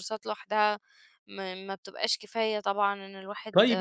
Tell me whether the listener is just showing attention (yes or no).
no